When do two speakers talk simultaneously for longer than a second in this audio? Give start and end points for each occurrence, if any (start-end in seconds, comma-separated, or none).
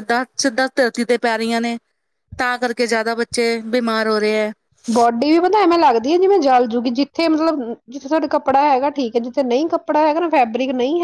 none